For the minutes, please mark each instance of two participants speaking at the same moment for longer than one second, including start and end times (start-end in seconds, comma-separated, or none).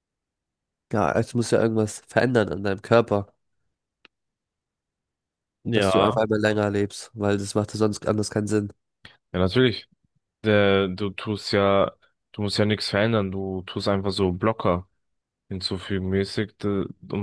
none